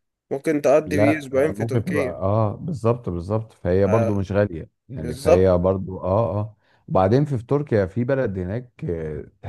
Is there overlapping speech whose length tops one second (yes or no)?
yes